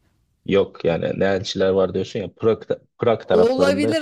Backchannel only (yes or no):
no